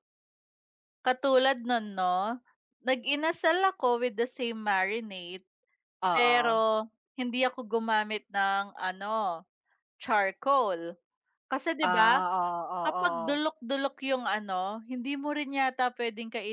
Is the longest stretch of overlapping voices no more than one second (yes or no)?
yes